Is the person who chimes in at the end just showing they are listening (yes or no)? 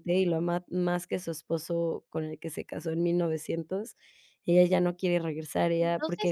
no